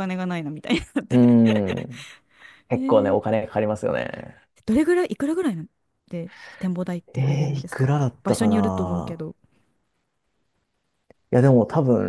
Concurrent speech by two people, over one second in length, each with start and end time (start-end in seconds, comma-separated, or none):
7.2-9.2